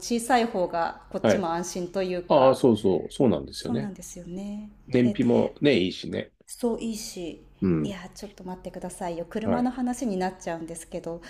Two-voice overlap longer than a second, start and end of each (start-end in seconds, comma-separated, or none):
none